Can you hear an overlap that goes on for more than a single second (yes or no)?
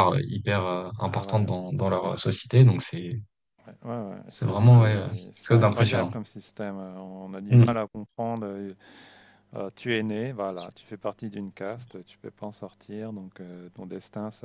yes